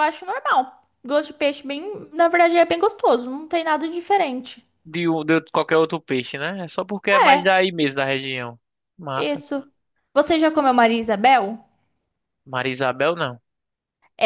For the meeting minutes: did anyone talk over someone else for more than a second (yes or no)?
no